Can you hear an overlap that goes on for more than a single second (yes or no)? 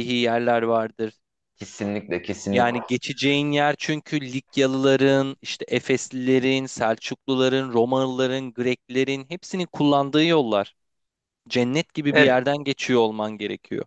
no